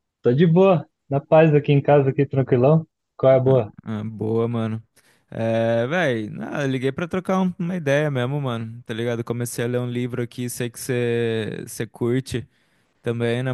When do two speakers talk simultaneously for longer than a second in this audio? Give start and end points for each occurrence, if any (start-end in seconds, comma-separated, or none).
none